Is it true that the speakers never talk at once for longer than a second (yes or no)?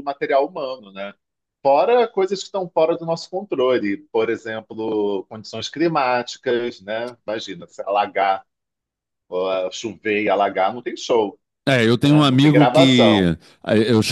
no